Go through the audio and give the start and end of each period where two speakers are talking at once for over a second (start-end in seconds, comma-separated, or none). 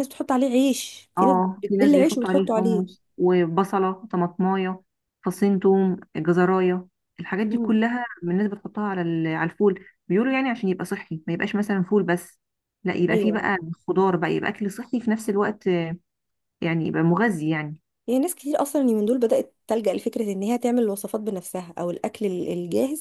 1.2-2.8